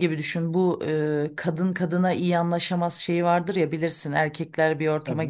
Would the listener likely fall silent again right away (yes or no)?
yes